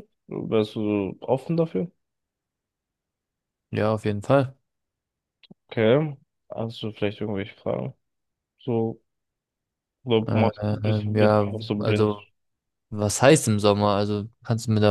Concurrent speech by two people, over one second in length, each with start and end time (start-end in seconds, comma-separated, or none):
10.3-12.1